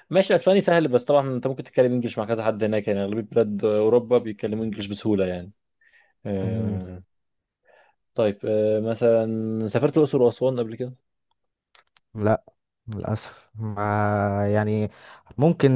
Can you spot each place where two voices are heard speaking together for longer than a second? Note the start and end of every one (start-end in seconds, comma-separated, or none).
none